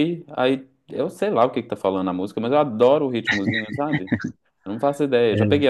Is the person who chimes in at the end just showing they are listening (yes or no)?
yes